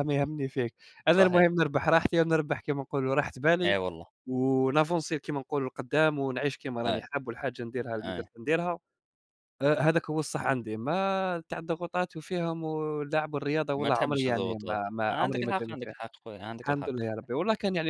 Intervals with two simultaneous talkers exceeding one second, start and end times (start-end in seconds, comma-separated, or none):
13.8-15.9